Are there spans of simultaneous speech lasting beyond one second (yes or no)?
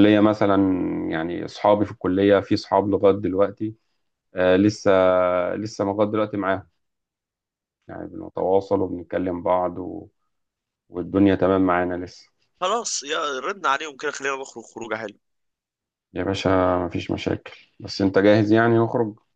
no